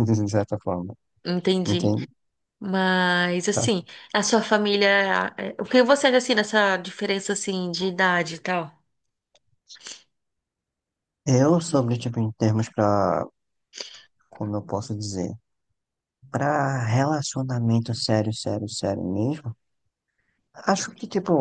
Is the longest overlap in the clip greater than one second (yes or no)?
no